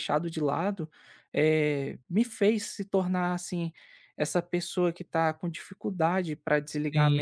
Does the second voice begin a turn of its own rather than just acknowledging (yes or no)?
no